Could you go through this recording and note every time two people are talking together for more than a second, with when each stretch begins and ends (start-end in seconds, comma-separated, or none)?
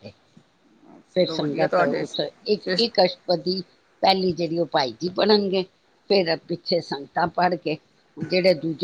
1.2-2.9